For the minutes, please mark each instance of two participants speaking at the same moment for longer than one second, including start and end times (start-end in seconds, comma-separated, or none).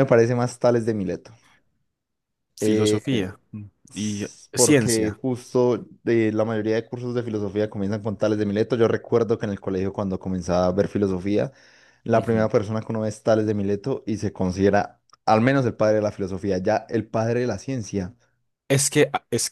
3.9-5.2